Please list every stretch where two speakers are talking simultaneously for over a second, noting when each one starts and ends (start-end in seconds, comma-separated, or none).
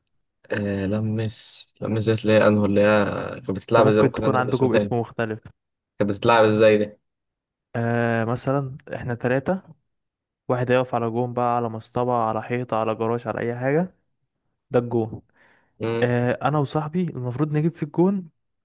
3.8-5.0